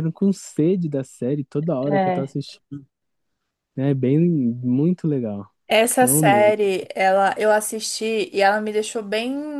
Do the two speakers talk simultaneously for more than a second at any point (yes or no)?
no